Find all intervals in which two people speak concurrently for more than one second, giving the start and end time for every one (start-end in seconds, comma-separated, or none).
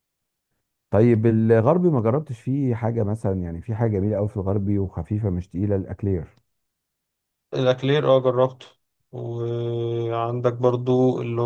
none